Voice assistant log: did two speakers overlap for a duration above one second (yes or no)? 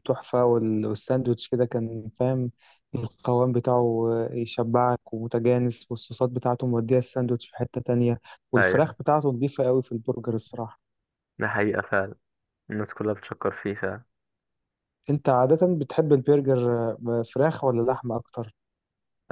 no